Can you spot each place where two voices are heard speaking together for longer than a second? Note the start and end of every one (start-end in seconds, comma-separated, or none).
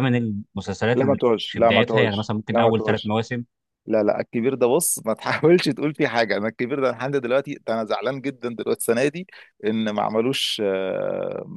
0.9-3.1